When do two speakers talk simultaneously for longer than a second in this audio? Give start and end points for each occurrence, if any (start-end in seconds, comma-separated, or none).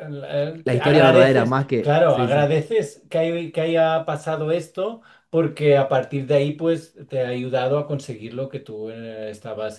0.6-2.5